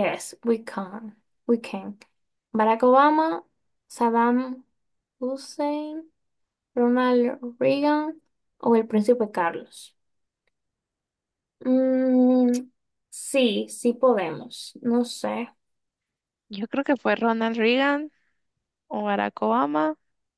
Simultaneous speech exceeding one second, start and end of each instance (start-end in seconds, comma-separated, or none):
none